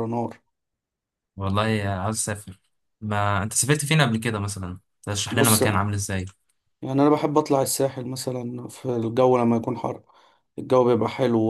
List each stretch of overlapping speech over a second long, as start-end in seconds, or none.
none